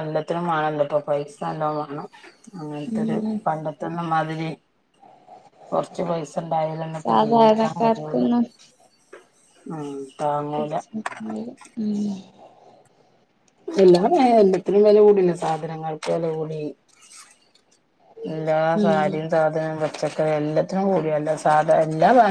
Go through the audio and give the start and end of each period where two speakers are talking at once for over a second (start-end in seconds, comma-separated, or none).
7.0-8.3